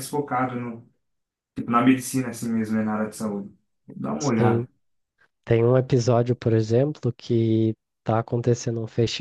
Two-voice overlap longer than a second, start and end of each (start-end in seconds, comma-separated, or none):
none